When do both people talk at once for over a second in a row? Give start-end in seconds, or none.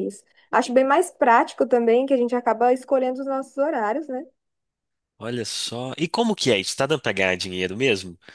none